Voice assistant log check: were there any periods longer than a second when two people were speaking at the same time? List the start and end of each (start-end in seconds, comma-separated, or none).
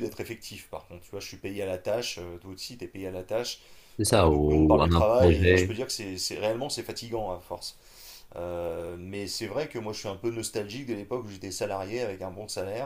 4.1-5.8